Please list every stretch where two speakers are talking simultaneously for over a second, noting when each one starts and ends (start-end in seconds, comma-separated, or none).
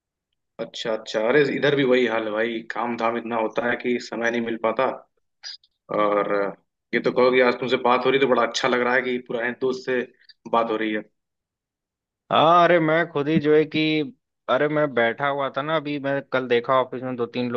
none